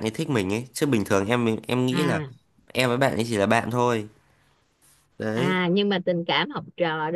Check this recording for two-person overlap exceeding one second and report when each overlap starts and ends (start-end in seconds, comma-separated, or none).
none